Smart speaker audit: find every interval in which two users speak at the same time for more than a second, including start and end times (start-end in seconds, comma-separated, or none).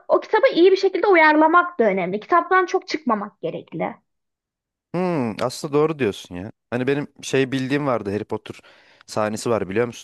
none